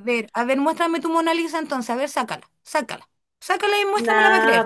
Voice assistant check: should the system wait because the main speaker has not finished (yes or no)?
no